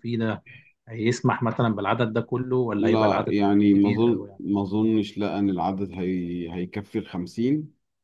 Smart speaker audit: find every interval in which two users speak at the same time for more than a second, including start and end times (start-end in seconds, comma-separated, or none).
2.8-4.4